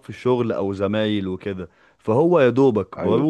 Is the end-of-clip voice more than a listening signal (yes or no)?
no